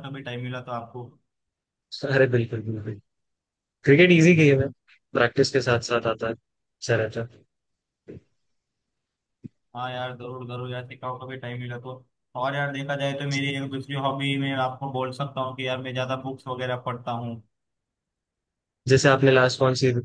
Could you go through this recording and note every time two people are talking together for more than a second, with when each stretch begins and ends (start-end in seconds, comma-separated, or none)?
none